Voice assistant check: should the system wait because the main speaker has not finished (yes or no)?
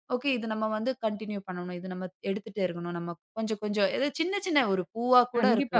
no